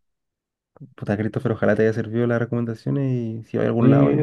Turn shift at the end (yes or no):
yes